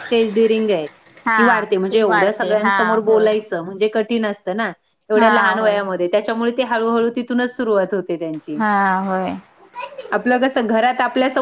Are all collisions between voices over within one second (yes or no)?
no